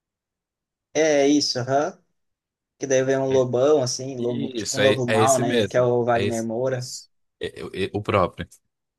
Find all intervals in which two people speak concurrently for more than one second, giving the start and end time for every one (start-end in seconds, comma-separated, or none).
4.2-6.9